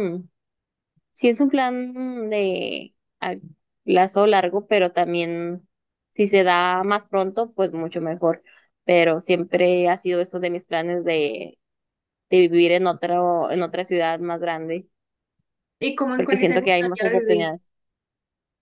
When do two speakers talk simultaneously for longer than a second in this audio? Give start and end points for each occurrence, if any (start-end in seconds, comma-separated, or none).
16.1-17.5